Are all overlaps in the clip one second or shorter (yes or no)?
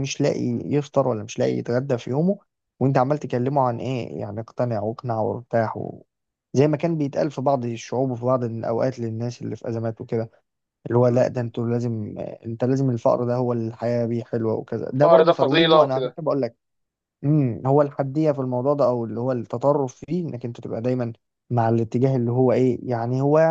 no